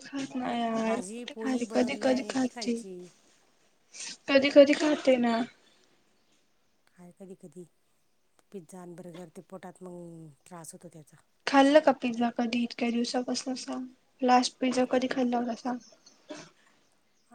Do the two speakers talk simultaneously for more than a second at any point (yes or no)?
yes